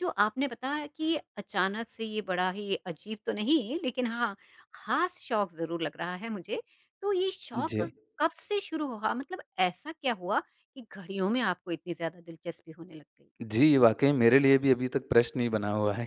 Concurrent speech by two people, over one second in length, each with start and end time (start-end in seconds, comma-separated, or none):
none